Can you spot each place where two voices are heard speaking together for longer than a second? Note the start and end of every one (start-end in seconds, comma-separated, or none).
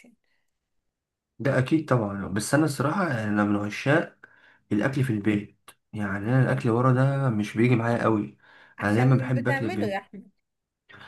8.8-10.0